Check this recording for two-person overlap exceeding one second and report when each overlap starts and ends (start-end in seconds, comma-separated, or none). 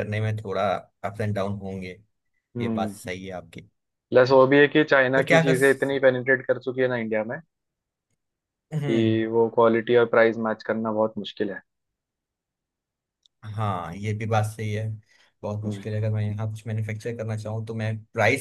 none